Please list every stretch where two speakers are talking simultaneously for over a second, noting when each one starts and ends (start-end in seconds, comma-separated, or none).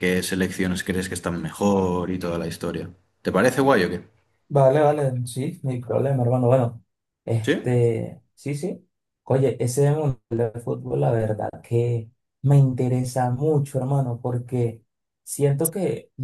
none